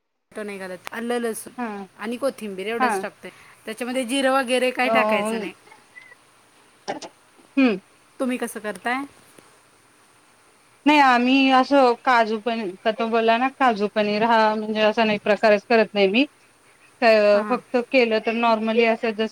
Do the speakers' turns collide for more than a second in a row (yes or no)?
no